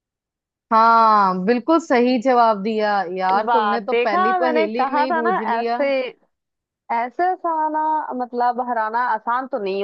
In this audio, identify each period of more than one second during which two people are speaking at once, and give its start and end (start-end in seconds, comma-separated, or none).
3.5-5.8